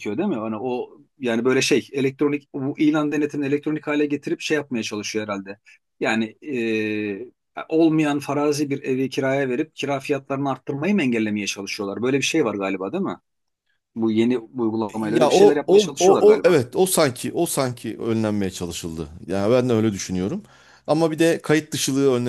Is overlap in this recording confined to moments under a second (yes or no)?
no